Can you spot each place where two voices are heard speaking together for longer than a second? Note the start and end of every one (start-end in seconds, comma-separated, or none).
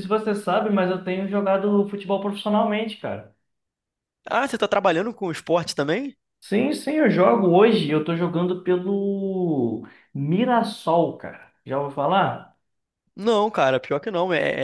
none